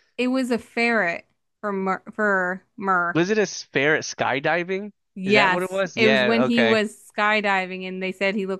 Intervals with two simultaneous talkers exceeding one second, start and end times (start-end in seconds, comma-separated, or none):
5.2-6.8